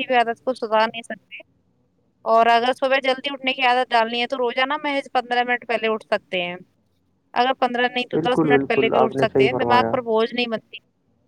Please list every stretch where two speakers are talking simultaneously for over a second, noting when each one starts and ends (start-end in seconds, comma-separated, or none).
8.1-10.0